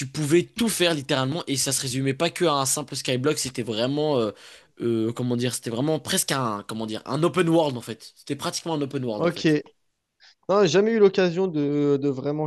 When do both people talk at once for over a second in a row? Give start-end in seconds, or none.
none